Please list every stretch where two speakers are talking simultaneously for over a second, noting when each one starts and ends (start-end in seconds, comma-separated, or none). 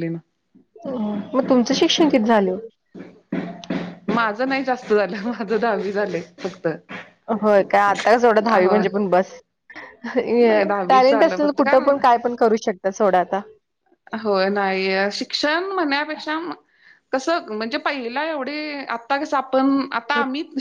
10.5-12.0